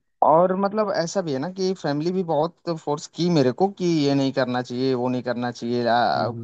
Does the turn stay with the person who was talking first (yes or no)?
yes